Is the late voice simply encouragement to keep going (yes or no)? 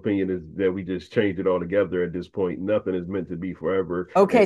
no